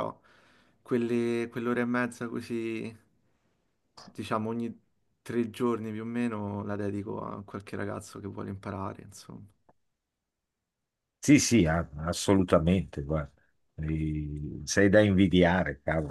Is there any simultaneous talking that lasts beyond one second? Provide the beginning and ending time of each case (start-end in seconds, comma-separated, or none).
none